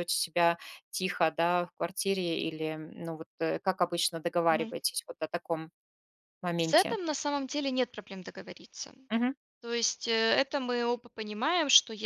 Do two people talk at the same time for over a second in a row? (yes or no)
no